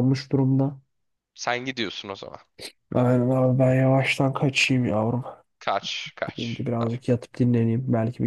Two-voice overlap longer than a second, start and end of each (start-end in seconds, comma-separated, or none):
none